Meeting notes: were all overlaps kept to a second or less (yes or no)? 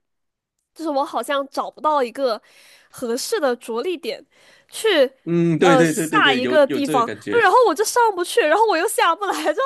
no